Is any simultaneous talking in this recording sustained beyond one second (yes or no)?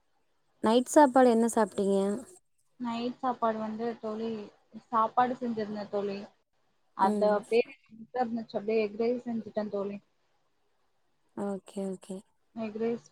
no